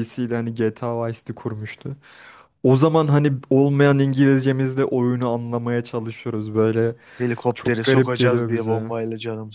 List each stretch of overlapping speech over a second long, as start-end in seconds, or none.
7.5-8.9